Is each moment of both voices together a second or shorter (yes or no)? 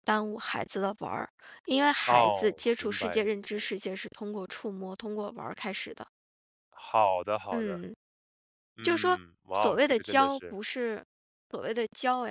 no